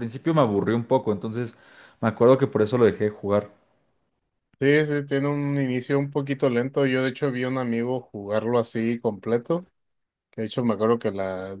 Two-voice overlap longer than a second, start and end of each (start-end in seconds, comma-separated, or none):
none